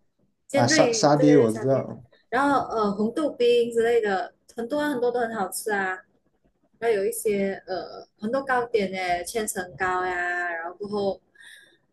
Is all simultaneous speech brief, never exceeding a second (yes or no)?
no